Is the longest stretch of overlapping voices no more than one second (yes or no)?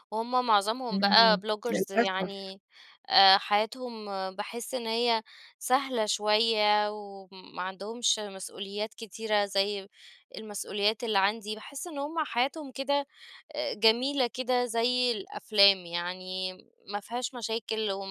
no